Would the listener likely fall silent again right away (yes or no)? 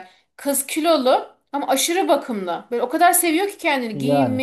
yes